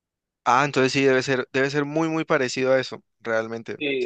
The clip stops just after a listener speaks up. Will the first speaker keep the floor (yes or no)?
no